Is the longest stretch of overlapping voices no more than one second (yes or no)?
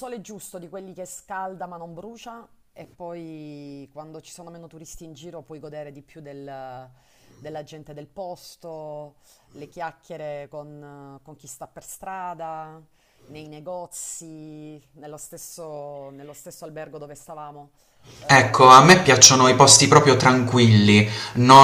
no